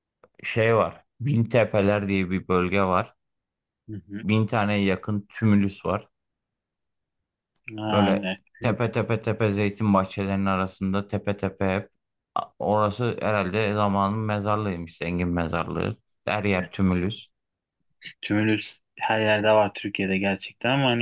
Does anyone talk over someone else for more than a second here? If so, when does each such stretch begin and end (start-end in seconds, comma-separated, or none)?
none